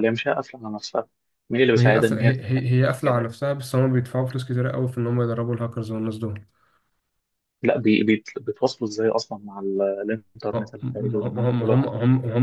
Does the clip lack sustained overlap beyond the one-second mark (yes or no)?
no